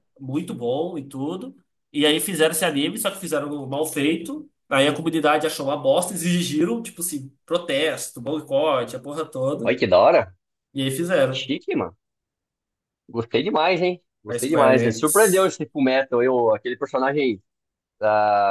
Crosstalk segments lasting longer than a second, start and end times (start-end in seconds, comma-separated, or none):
14.3-15.5